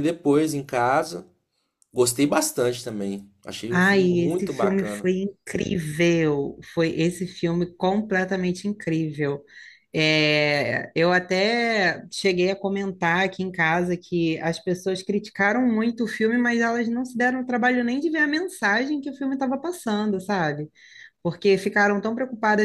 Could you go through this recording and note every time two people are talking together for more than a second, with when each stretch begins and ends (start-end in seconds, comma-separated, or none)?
3.7-5.1